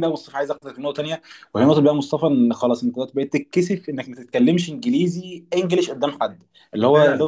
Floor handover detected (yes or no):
no